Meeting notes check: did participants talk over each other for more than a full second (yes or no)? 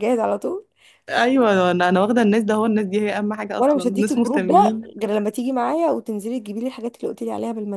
yes